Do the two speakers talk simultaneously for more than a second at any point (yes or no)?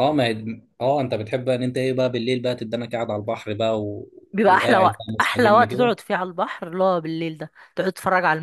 yes